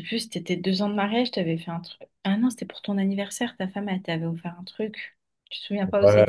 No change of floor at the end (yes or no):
no